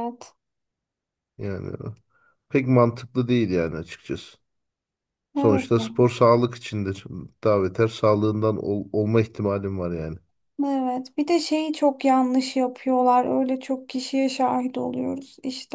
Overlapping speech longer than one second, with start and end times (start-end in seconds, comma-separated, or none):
none